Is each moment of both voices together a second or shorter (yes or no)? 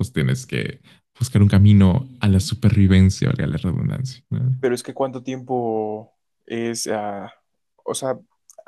yes